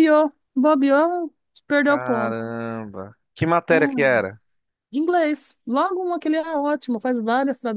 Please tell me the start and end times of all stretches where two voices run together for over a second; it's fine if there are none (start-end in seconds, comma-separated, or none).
none